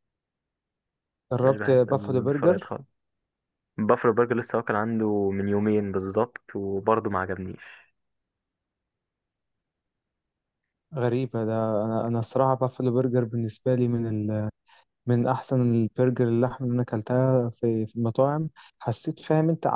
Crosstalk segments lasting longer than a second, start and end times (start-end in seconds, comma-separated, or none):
1.4-2.7